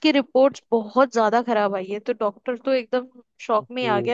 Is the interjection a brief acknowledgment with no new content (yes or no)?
yes